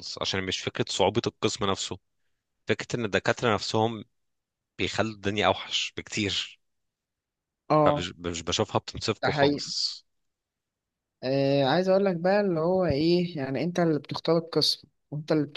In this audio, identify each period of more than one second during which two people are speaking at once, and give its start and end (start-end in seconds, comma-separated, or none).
none